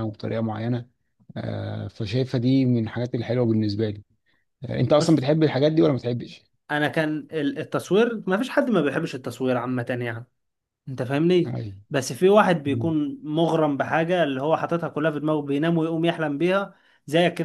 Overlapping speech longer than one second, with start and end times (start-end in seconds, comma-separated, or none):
none